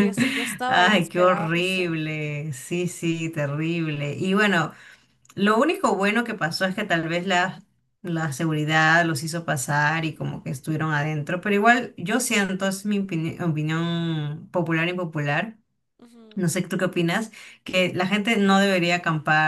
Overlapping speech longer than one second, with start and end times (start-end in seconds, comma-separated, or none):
0.7-2.0